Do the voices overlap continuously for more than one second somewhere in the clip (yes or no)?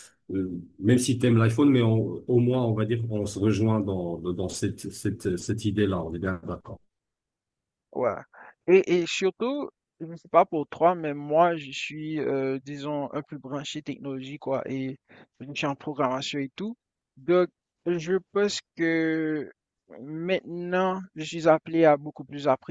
no